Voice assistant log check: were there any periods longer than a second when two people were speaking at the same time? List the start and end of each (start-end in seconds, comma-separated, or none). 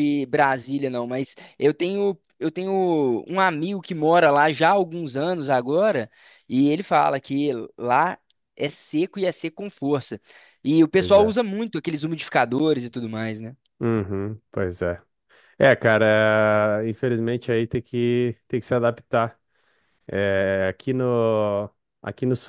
none